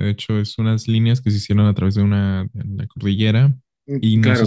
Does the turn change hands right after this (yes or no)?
yes